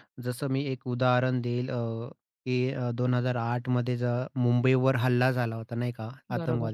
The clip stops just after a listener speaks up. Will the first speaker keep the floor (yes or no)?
yes